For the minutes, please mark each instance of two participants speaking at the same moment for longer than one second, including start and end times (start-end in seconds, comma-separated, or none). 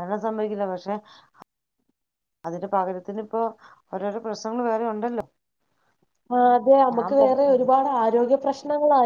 none